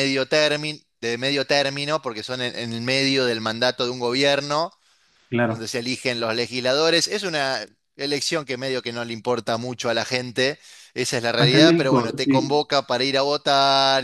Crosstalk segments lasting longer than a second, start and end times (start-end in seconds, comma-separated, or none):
11.4-12.6